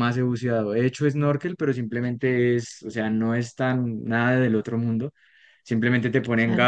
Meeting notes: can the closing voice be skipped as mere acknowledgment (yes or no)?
yes